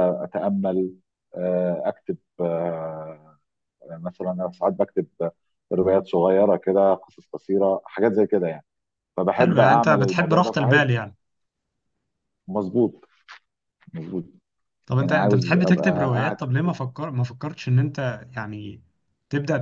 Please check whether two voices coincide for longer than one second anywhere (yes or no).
yes